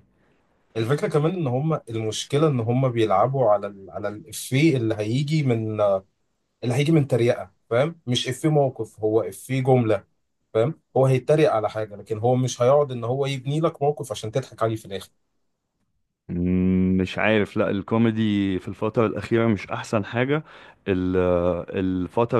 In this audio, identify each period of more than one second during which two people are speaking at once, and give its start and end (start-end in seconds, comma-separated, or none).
none